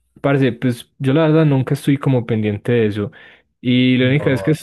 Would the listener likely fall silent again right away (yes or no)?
yes